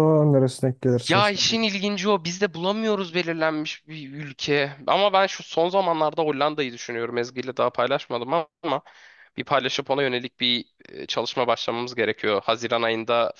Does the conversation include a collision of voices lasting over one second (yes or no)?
no